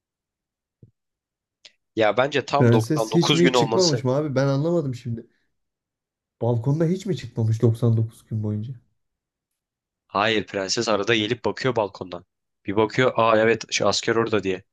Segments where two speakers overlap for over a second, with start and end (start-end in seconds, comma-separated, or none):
2.6-4.0